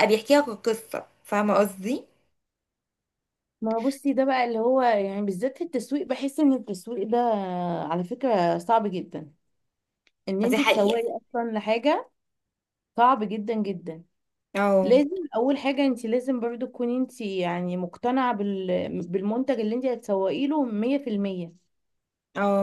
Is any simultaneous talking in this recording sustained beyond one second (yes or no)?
no